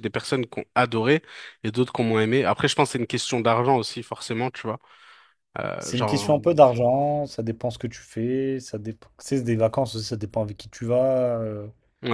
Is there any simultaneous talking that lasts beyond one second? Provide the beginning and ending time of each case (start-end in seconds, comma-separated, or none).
none